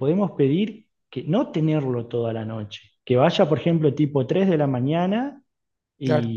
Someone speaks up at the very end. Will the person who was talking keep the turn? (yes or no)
yes